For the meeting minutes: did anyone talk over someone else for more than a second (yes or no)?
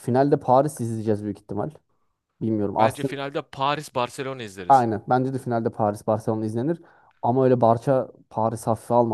no